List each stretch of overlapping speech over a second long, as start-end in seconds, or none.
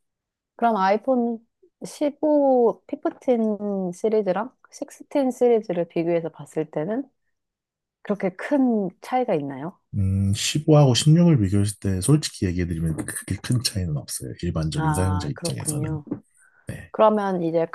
14.8-16.0